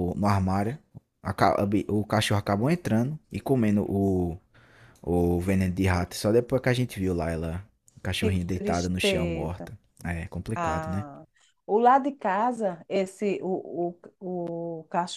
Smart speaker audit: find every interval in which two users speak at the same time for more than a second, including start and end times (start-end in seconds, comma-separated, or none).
8.2-9.7